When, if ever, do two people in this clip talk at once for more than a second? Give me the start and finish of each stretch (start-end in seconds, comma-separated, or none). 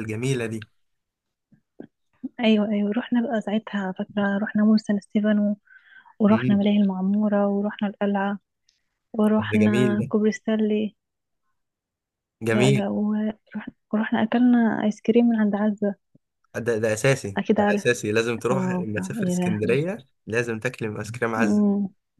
18.5-19.9